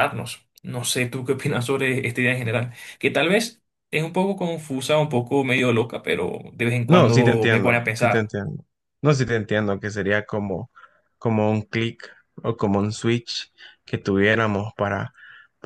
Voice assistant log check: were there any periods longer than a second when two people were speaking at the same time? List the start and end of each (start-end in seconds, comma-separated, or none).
6.9-8.3